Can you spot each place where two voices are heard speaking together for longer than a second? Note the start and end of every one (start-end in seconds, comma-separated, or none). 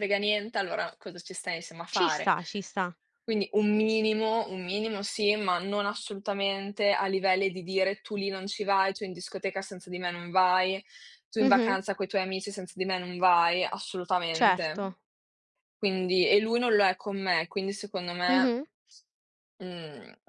none